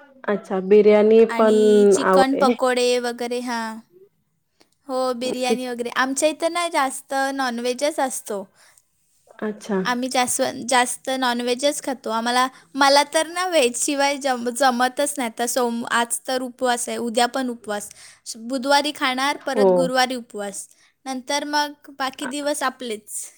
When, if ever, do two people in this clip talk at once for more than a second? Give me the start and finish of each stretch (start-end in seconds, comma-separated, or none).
none